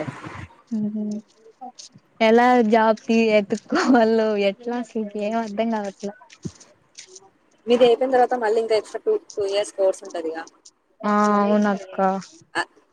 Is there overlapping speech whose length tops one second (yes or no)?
no